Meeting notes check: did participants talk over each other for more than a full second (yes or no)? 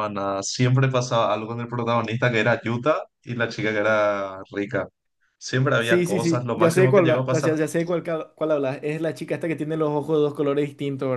yes